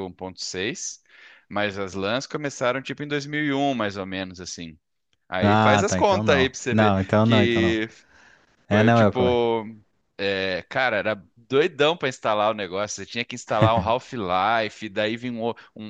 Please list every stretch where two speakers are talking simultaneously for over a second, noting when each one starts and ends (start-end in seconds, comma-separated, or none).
5.4-7.8